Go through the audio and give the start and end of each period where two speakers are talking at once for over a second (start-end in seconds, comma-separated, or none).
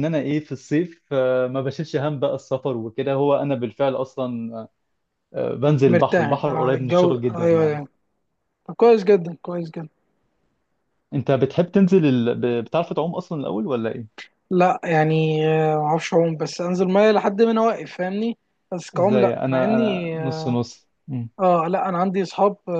5.9-7.8, 18.9-20.6